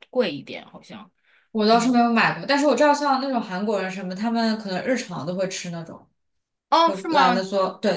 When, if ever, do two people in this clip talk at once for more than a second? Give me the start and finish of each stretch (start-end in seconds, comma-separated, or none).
none